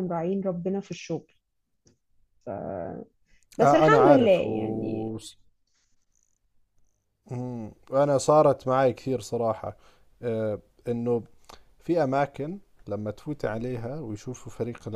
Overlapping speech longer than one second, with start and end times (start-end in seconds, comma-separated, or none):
3.6-5.1